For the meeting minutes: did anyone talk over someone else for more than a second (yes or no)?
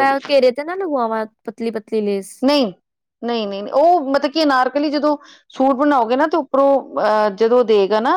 no